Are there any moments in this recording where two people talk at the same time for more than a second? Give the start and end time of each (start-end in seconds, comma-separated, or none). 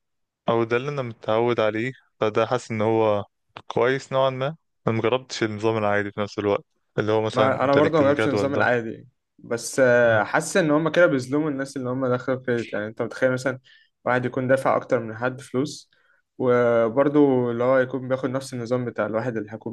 7.3-8.7